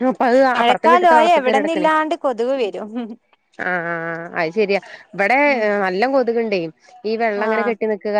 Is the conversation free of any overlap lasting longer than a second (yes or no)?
no